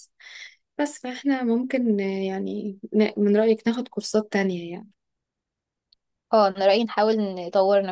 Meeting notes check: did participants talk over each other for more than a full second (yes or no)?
no